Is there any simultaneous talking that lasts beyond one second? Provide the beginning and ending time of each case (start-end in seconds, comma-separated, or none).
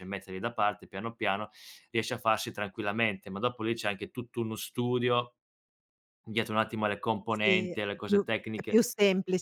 7.3-8.8